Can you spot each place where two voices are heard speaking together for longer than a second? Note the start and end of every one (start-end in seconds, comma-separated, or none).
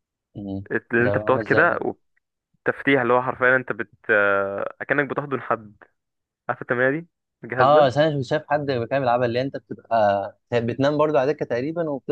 none